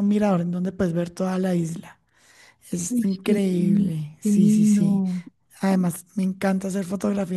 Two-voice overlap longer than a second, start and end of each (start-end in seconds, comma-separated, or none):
2.9-5.0